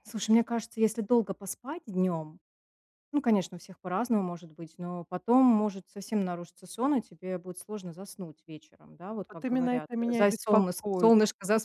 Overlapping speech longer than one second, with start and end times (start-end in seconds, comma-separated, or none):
9.3-11.1